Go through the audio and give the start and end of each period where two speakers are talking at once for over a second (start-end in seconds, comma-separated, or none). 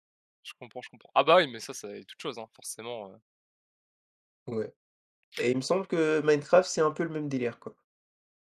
none